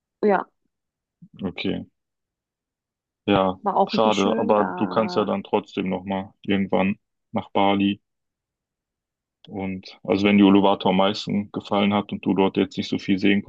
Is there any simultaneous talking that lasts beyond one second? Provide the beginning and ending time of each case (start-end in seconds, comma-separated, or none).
3.6-5.3